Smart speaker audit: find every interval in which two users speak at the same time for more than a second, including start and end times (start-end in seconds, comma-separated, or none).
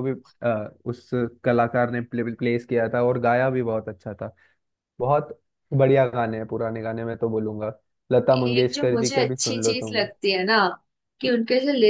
8.3-10.0